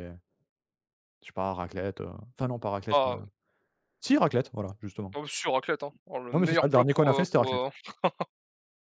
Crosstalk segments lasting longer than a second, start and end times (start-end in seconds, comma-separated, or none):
6.3-7.6